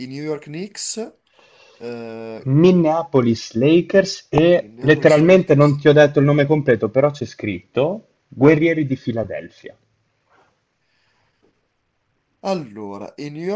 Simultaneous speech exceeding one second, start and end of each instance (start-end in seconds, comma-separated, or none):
4.6-5.8